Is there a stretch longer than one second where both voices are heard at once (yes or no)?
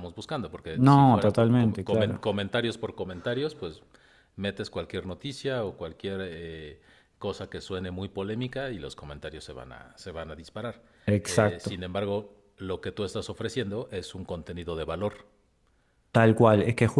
yes